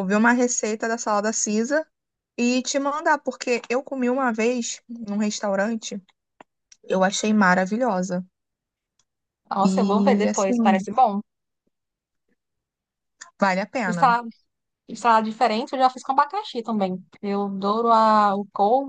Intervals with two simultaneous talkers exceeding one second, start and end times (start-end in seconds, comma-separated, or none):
9.6-10.9